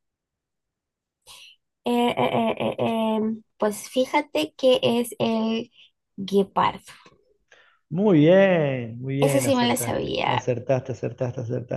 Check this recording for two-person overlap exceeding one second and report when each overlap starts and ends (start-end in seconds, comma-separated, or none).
9.2-10.5